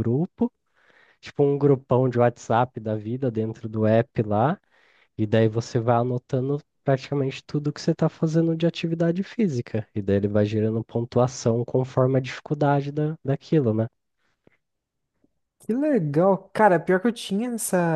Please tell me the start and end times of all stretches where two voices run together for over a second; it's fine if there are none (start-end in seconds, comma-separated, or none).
none